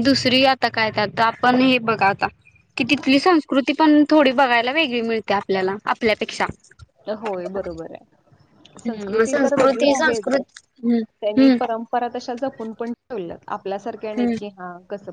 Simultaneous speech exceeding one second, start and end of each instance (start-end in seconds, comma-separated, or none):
8.8-10.3